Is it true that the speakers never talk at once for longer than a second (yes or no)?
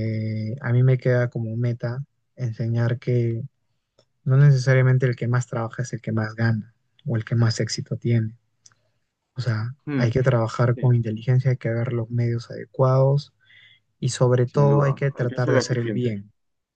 no